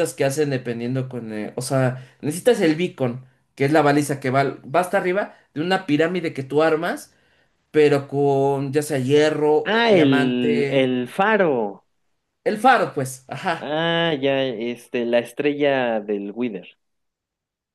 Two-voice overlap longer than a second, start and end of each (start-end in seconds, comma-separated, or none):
9.6-10.9